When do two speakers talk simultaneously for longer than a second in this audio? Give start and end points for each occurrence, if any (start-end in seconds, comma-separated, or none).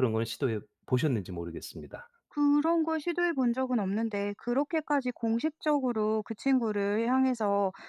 none